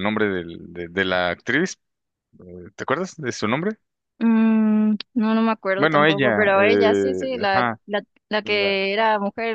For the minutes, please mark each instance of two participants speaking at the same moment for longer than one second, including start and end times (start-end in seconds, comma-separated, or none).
5.8-7.8